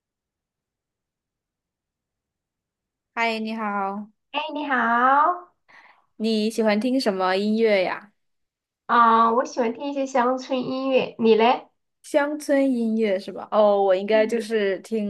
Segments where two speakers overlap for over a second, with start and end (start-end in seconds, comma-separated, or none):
none